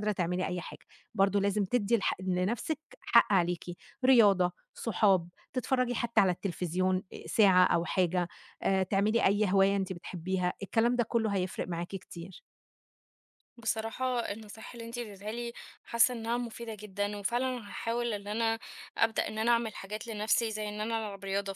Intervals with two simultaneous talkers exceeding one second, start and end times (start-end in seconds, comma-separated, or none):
none